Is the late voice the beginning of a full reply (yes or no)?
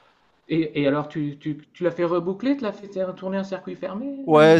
yes